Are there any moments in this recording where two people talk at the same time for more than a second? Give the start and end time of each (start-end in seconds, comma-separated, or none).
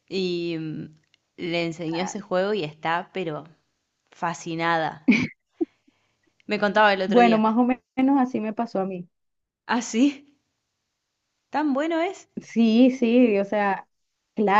none